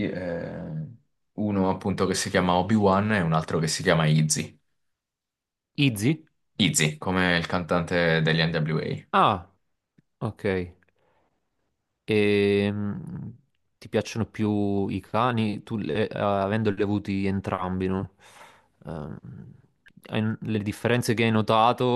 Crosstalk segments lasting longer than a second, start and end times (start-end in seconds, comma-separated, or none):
none